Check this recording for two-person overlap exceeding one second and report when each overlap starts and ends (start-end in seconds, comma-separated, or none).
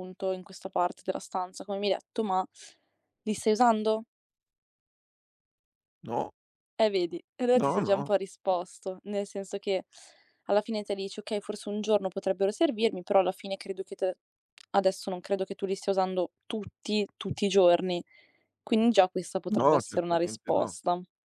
19.5-20.8